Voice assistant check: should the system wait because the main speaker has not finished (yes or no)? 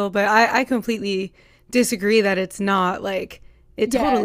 yes